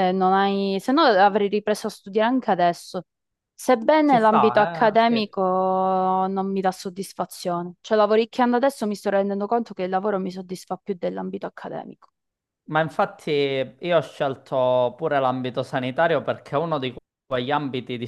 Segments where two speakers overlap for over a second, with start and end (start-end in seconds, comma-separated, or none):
4.0-5.3